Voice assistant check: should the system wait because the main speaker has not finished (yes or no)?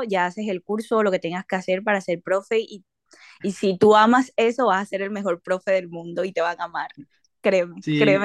no